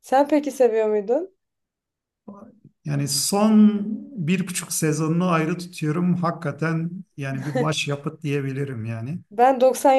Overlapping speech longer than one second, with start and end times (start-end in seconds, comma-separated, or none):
none